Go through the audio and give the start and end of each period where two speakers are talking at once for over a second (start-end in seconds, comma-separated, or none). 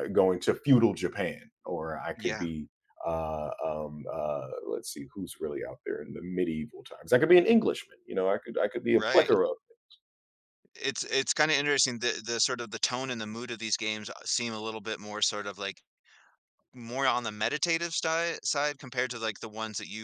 none